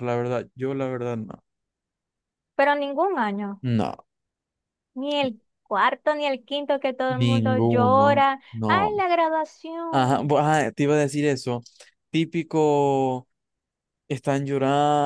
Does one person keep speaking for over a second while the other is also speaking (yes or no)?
yes